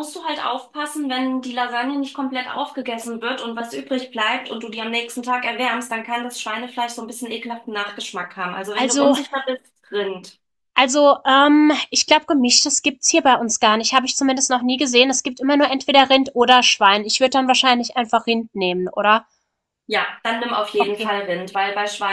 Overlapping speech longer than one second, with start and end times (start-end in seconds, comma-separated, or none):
none